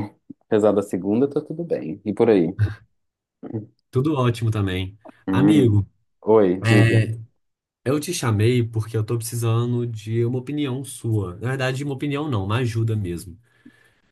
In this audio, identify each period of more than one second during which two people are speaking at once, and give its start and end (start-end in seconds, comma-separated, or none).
none